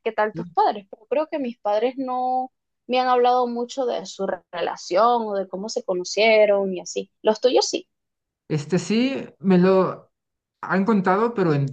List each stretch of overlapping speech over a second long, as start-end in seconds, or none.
none